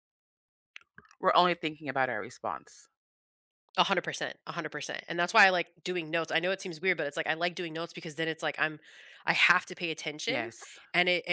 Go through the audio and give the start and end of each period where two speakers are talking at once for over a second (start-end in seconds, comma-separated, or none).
none